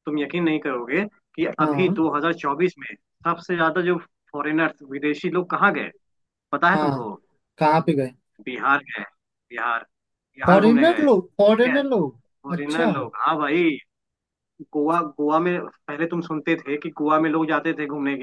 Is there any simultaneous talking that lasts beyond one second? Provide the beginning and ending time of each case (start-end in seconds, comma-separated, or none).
10.5-11.8